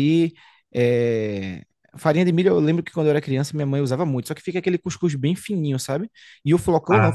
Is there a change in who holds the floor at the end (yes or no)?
no